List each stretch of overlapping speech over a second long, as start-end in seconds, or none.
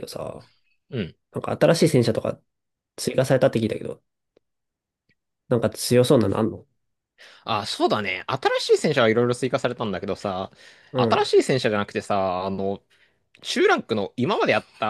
none